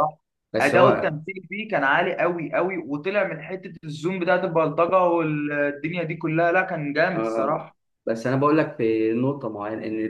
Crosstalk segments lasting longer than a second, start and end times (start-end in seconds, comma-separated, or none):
none